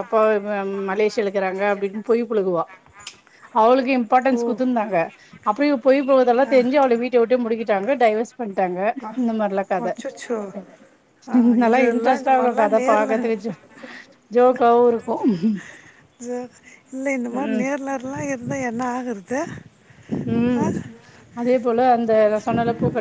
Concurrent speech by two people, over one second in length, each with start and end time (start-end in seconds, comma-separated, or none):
11.6-13.2